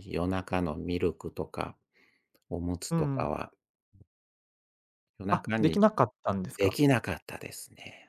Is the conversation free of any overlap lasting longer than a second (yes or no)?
yes